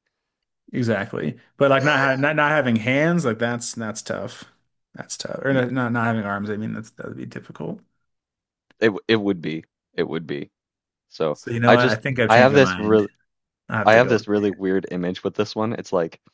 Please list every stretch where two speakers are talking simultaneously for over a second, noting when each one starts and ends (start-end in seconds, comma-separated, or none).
11.3-13.0